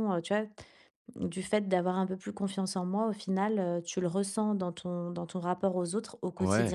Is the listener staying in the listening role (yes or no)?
no